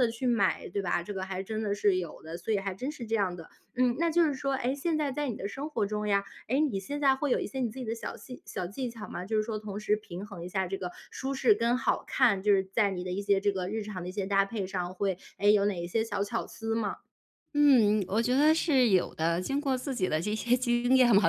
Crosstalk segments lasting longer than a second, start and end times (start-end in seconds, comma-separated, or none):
none